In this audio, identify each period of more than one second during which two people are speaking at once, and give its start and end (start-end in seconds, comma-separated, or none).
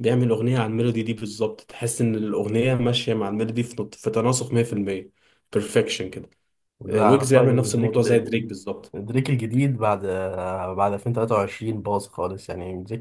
6.9-8.5